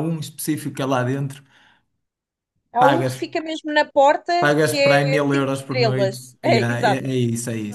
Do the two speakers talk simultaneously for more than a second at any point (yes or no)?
yes